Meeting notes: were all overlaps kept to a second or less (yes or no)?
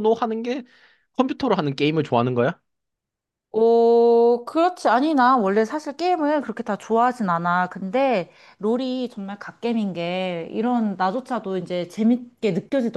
yes